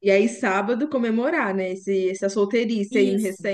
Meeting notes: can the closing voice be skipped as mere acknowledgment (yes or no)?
no